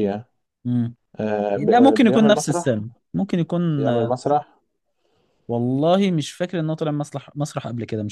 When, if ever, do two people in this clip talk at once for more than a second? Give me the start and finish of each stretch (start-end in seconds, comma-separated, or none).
1.6-2.8